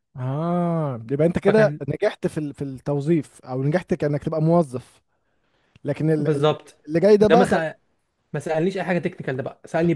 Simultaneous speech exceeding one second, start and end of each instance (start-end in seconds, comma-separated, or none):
none